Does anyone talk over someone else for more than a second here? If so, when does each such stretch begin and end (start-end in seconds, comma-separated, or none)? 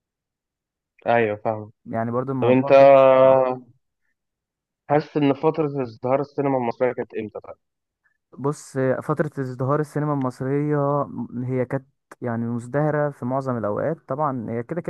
none